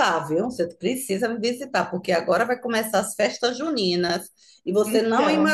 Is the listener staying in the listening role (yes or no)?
yes